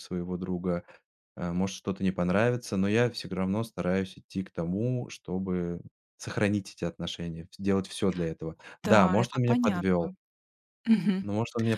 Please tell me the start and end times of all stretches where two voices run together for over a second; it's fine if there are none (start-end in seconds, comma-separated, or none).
8.8-10.1